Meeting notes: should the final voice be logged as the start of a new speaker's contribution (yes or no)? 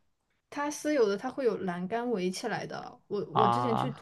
no